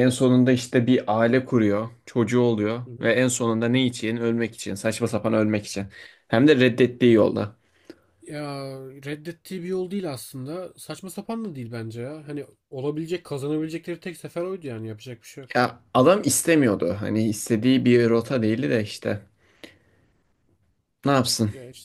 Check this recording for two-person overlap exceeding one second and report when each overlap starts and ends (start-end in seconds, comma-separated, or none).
none